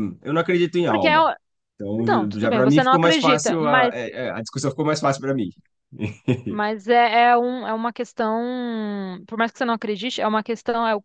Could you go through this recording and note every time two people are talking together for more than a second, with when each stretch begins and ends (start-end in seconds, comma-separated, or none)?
2.0-3.9